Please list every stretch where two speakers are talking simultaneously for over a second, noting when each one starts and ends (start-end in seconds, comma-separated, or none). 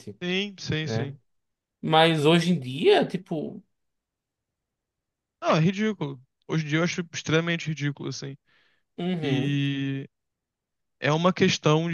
none